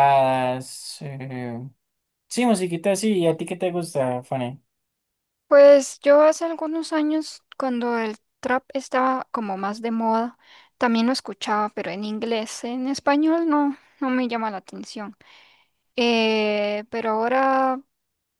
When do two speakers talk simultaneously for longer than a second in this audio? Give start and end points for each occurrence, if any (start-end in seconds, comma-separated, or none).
none